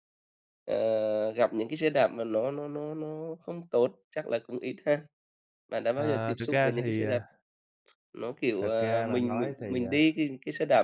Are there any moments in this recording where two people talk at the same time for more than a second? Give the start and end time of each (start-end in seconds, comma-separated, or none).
5.9-7.2, 8.6-10.0